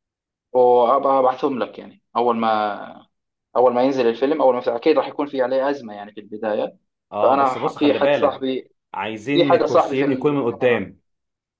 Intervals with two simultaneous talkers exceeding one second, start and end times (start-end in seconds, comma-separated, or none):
7.2-8.5, 9.3-10.8